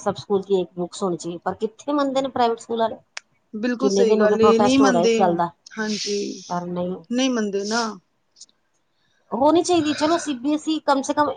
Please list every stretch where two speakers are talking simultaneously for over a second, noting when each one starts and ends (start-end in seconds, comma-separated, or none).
3.8-5.1